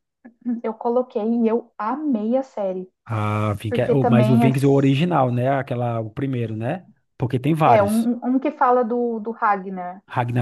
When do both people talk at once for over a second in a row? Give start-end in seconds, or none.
3.7-5.0